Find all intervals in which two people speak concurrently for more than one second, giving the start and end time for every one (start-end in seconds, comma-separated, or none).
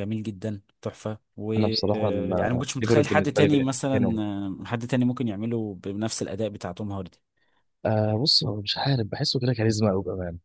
1.6-4.2